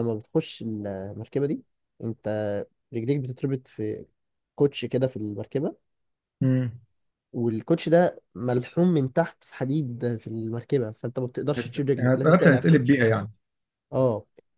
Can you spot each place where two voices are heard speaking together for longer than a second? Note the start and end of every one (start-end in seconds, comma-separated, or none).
11.6-13.1